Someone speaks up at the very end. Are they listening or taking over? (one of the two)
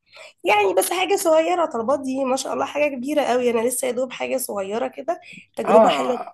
taking over